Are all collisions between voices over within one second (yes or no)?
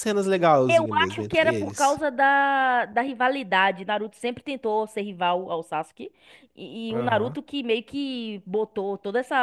no